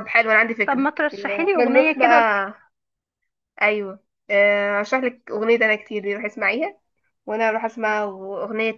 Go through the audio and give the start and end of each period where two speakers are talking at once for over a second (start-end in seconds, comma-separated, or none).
0.7-2.3